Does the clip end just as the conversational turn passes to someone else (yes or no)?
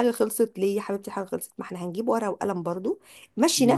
no